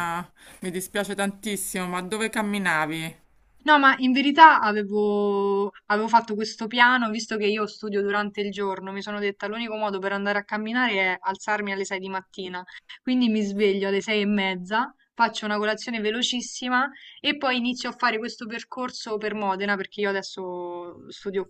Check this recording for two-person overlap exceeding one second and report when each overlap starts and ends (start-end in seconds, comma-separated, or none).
none